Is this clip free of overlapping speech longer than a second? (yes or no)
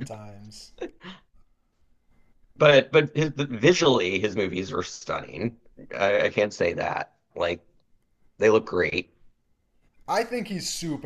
yes